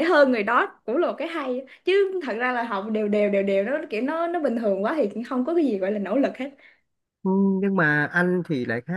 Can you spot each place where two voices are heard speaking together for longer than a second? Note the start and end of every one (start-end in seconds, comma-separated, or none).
none